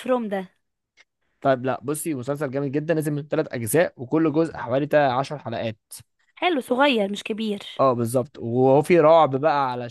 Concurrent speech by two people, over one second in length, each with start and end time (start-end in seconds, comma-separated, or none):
none